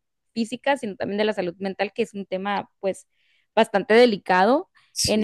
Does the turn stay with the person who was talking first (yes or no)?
yes